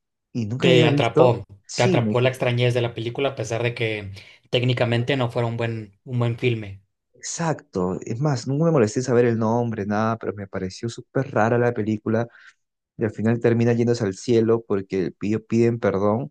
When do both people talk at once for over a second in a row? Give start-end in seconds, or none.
0.6-2.2